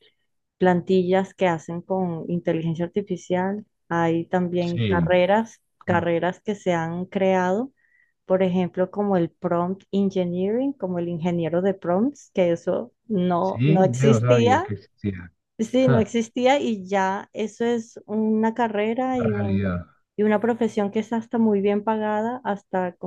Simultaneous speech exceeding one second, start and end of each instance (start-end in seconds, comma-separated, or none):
13.4-14.7